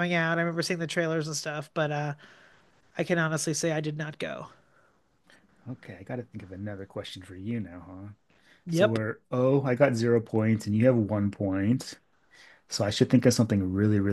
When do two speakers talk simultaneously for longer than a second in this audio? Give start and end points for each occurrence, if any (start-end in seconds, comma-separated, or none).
none